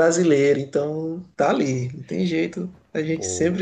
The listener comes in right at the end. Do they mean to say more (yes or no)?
no